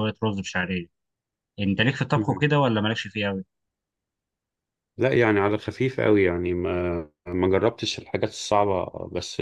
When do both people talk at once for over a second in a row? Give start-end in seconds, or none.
none